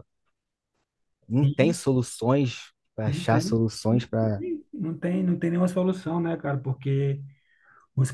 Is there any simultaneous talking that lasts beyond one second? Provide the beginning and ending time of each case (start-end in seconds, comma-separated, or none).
3.0-4.4